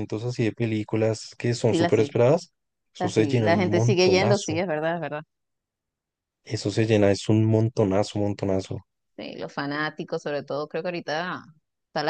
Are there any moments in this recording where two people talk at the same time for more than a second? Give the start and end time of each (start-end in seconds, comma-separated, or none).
3.0-4.6